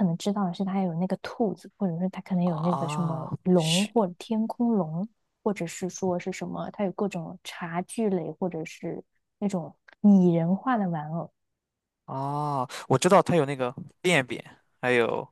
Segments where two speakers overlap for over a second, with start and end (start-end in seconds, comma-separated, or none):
2.4-3.9